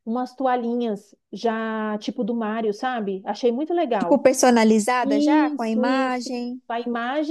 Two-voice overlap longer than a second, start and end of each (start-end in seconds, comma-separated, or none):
5.0-6.3